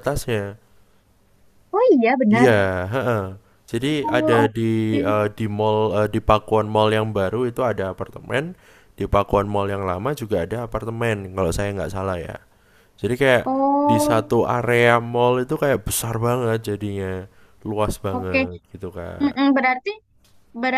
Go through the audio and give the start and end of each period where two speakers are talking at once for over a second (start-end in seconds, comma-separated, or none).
none